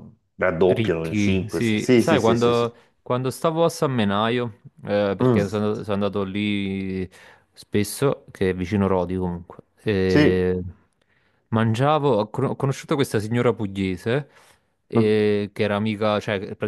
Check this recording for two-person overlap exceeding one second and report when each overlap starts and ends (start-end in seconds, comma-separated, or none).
0.7-2.7